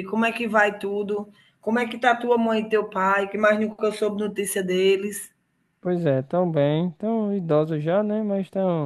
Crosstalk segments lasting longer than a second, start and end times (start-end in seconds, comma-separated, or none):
none